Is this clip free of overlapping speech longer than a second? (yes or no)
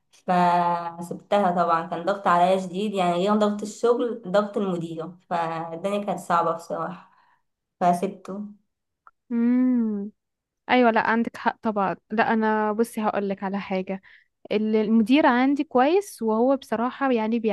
yes